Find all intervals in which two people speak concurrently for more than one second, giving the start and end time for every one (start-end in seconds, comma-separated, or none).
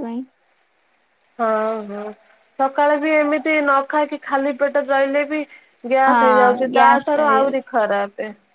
6.1-7.7